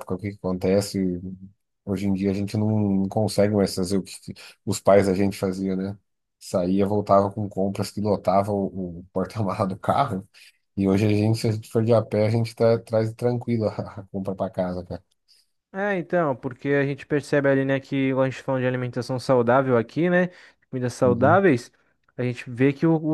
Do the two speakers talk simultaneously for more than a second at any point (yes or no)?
no